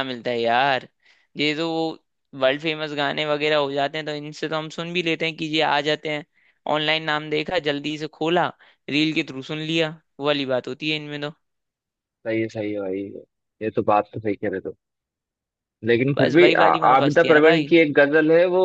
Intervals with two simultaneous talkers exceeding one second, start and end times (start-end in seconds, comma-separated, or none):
16.1-17.7